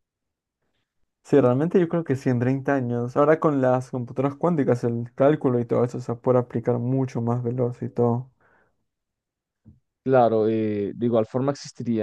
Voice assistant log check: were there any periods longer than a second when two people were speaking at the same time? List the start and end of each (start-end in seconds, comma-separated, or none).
none